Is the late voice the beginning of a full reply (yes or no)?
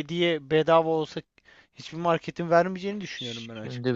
yes